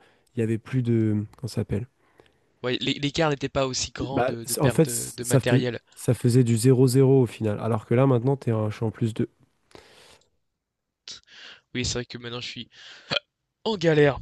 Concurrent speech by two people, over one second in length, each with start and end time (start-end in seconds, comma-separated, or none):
4.0-5.8